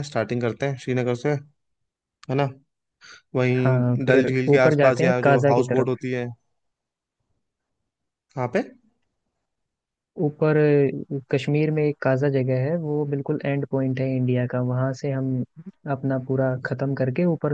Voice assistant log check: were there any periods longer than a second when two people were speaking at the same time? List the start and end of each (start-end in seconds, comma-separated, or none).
3.6-5.9